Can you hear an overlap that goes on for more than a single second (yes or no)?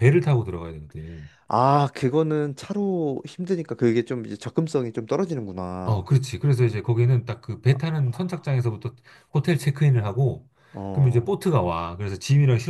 no